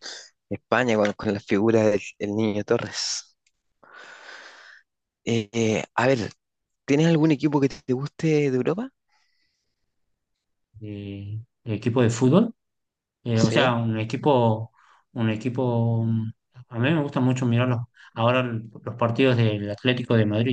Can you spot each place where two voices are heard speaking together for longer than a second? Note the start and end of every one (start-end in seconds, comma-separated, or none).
none